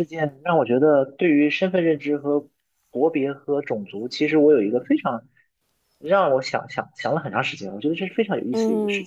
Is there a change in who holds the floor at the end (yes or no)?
yes